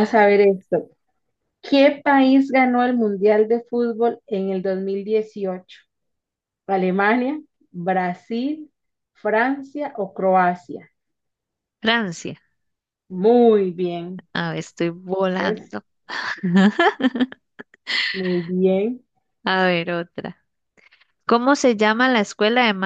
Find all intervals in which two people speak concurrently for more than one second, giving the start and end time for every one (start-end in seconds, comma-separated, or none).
none